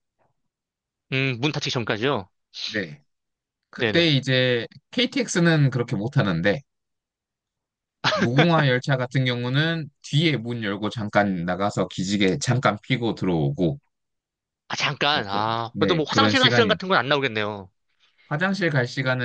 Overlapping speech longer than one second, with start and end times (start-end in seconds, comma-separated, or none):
15.1-16.8